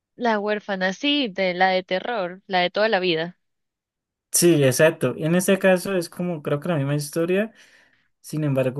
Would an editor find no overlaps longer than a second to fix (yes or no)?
yes